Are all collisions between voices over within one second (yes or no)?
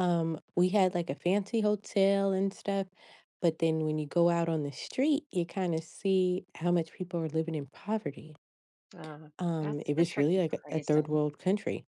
no